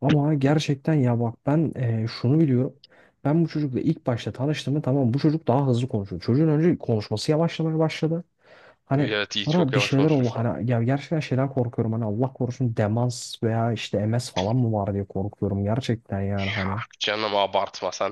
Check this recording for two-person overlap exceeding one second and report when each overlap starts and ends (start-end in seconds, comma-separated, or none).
8.9-10.4